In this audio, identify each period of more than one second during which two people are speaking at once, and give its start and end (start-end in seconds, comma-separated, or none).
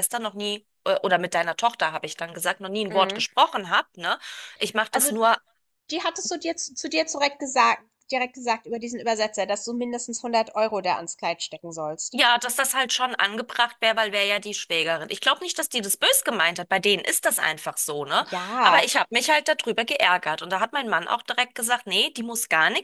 none